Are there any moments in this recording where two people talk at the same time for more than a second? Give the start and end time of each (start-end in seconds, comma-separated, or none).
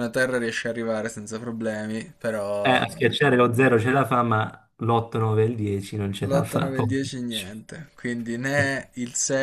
6.2-7.5